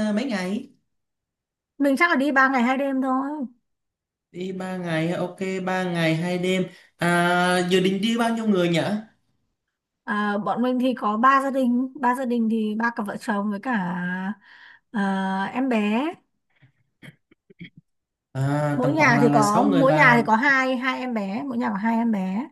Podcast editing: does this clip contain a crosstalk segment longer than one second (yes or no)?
yes